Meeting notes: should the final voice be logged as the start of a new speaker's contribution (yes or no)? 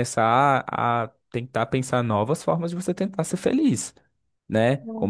no